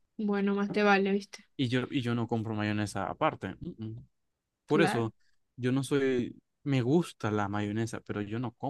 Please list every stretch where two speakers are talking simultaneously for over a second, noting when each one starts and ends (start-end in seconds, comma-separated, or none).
none